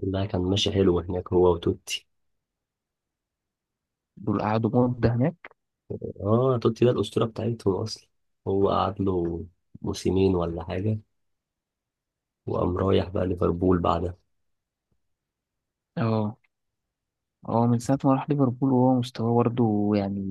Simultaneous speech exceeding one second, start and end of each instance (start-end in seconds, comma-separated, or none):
none